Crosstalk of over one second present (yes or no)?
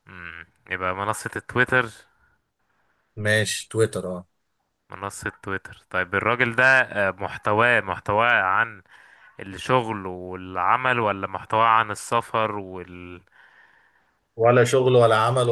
no